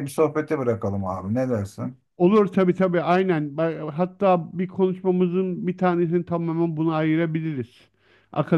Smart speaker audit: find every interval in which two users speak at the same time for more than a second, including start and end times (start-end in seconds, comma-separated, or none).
none